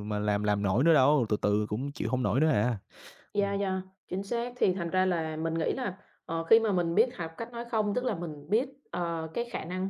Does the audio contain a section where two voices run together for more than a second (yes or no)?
no